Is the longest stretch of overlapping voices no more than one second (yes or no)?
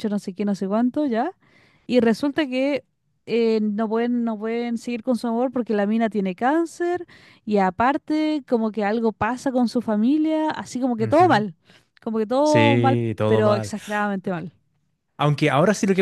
no